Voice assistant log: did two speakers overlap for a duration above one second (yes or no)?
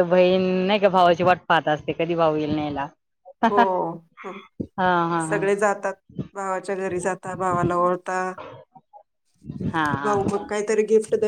no